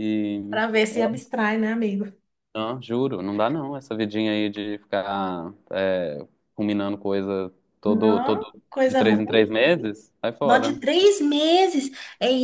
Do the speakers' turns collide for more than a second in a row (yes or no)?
yes